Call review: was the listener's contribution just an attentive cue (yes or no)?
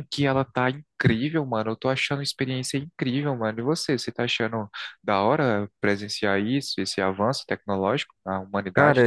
no